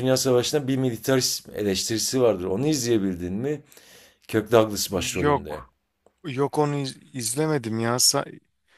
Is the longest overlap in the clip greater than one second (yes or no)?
no